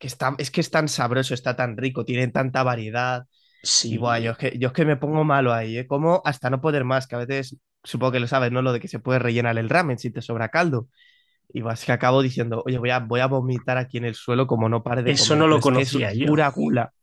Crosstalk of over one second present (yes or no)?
yes